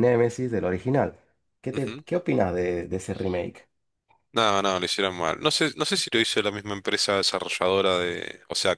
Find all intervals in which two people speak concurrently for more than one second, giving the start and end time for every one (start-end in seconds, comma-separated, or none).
none